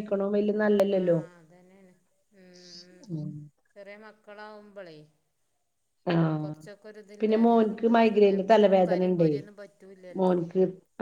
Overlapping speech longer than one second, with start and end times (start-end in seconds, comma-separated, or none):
7.2-9.3